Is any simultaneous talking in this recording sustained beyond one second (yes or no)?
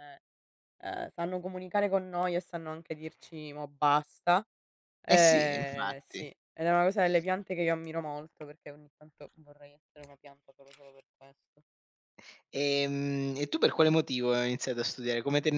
yes